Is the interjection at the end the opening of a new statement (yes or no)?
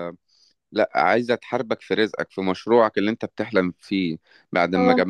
no